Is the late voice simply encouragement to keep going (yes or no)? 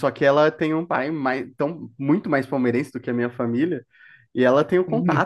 yes